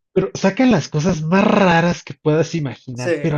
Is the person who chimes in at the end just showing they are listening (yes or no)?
yes